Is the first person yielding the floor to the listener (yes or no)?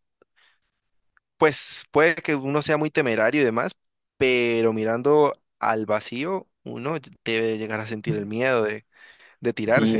yes